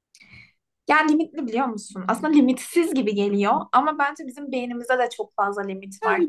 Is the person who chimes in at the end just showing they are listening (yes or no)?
no